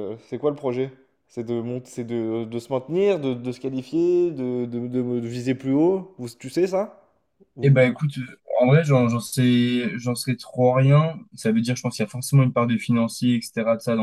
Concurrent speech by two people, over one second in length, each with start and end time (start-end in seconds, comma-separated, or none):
none